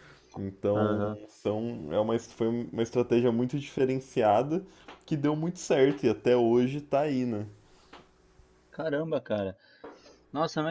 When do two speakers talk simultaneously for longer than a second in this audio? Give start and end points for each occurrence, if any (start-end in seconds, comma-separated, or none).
none